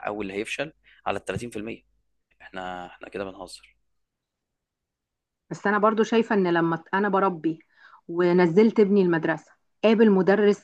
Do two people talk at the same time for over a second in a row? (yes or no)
no